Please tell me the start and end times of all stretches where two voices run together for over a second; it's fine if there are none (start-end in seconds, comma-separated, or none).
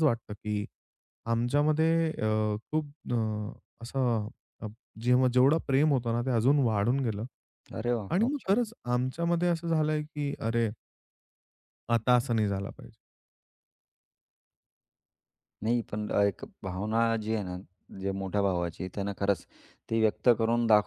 none